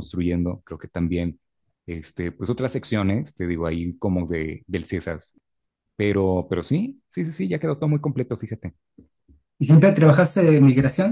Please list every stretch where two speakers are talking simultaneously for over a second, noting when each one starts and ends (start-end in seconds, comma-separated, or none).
none